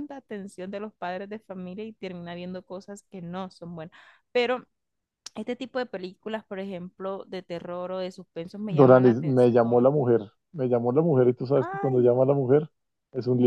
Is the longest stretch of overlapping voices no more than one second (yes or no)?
no